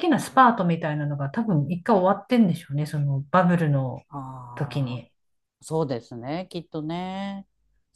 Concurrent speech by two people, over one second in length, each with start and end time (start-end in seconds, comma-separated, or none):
none